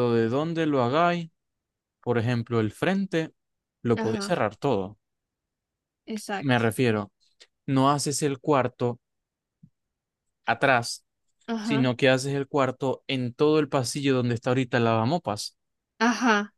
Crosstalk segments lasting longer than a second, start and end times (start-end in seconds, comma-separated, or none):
none